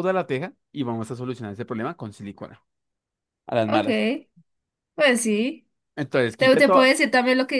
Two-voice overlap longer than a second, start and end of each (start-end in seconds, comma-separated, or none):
none